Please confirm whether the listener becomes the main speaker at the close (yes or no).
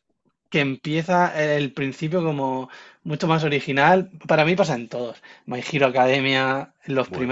yes